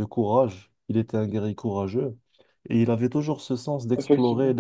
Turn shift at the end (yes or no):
no